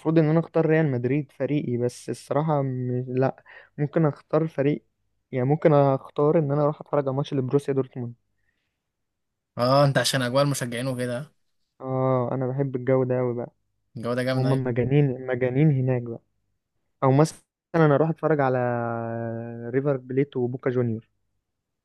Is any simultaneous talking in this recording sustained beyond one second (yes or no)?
no